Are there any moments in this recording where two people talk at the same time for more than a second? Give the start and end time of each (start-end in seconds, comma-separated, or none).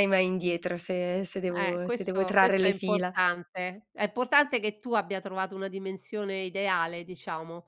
1.5-3.1